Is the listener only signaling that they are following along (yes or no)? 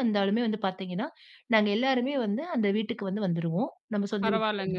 no